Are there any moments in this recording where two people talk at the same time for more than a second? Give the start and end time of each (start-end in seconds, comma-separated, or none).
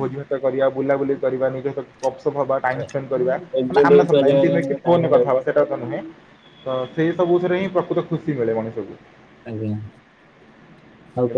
3.6-5.4